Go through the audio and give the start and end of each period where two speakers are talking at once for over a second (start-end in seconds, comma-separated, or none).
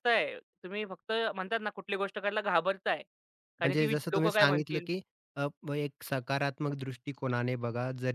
3.6-4.9